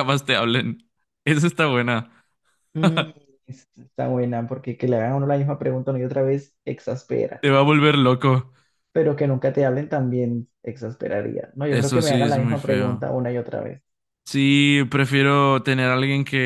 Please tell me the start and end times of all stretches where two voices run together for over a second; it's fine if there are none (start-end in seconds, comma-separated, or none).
11.7-13.1